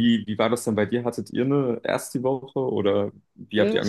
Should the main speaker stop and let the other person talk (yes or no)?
yes